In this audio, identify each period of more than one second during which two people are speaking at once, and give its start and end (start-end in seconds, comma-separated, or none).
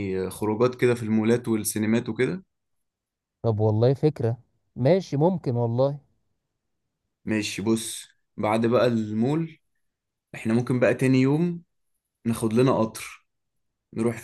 none